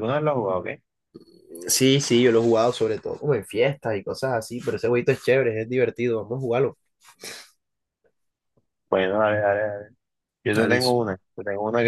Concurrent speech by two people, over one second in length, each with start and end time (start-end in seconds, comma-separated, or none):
none